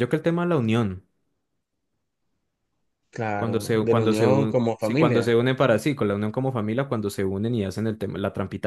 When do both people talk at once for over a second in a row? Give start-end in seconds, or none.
3.4-5.3